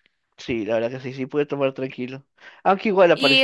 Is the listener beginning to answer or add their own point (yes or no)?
no